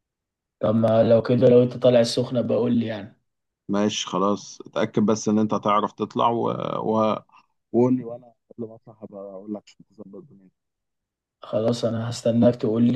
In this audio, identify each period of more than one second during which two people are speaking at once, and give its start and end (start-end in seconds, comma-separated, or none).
none